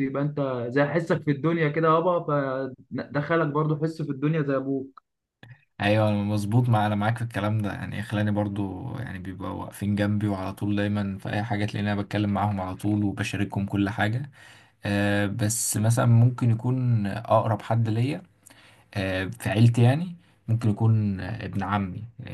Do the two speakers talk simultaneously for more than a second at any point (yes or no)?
no